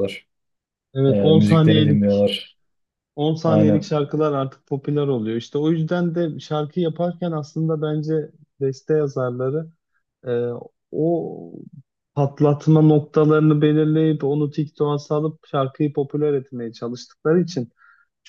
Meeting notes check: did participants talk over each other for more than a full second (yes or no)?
yes